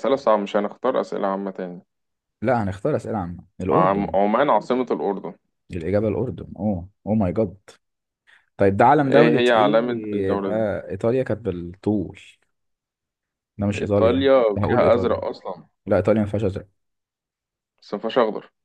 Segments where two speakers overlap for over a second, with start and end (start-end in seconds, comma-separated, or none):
9.1-10.5, 13.8-15.2